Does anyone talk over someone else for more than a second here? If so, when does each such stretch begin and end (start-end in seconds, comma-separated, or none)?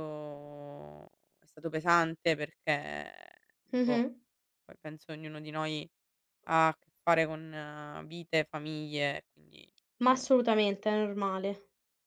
none